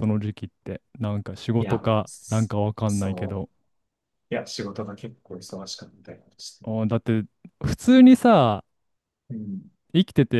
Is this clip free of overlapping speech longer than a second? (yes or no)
no